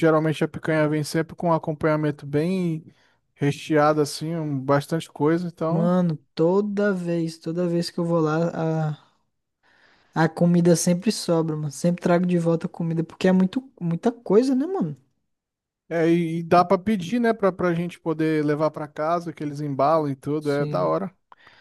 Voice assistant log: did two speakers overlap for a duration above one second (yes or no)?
no